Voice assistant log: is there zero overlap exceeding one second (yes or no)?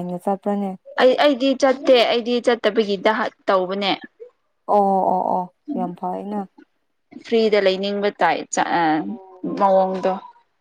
yes